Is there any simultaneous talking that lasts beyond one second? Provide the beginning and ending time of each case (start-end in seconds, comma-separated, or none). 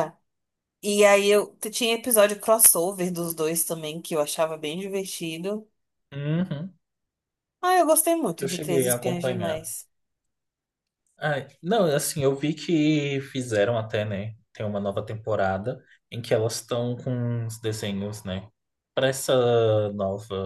8.4-9.7